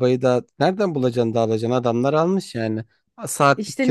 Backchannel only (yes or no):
no